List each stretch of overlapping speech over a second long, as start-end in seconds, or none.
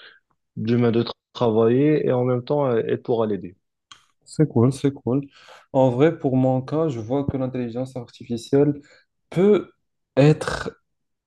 none